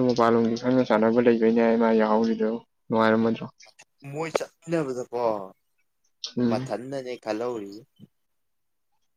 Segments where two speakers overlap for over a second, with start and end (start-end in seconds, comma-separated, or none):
none